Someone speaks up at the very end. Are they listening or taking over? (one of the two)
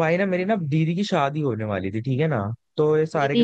listening